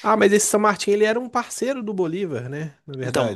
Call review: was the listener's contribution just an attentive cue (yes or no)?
no